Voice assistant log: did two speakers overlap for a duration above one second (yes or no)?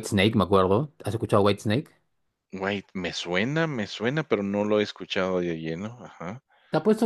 no